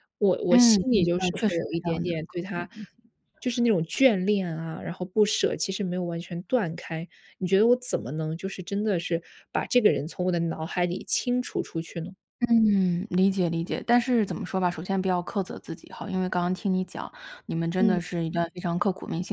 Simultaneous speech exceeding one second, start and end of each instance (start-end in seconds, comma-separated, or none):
0.5-2.7